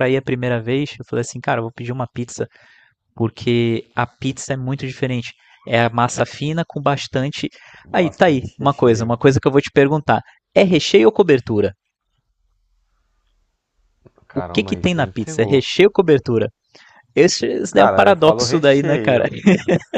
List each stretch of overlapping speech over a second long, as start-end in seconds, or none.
7.9-9.2, 14.3-15.6, 17.7-19.2